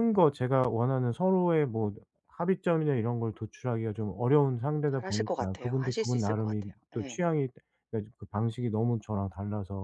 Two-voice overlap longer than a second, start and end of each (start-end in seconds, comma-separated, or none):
4.9-7.2